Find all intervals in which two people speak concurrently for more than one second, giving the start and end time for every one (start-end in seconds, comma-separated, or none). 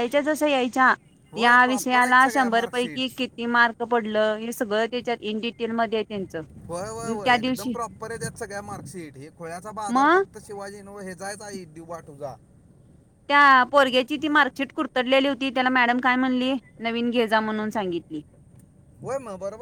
1.4-3.0